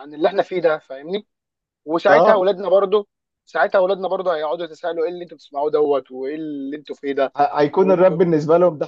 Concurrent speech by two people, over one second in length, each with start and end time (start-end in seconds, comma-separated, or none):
none